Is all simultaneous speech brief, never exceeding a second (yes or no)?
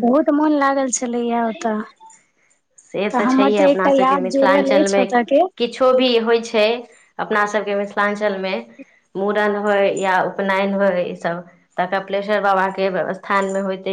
no